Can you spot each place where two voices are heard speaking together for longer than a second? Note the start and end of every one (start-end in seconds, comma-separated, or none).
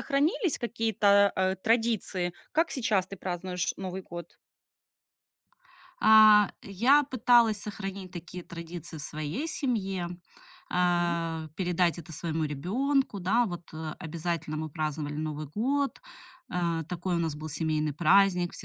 none